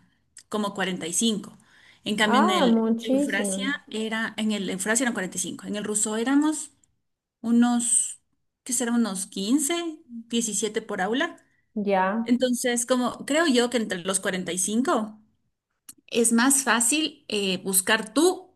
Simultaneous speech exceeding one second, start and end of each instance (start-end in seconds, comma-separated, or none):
2.2-3.7